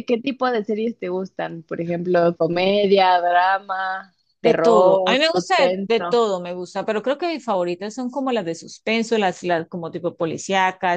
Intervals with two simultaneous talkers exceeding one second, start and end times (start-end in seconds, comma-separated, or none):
4.4-6.2